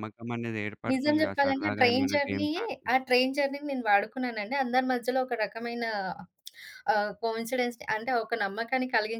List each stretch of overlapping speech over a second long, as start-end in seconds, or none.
0.9-2.9